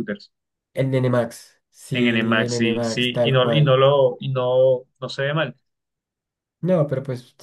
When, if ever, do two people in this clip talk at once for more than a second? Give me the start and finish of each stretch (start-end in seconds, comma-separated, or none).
1.9-3.8